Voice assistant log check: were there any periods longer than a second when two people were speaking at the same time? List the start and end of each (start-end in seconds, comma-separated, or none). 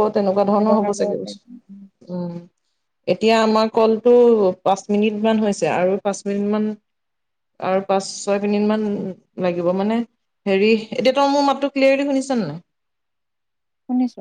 0.6-1.9